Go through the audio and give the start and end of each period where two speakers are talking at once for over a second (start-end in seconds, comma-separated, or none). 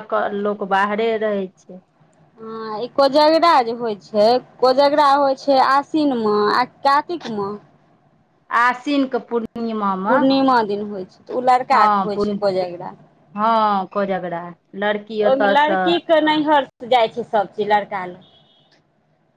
none